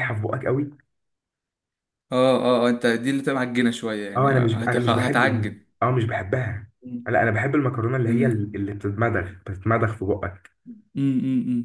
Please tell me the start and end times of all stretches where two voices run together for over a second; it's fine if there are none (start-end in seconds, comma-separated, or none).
4.2-5.6